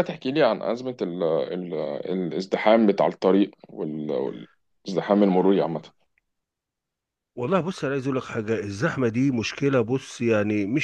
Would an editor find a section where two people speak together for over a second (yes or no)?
no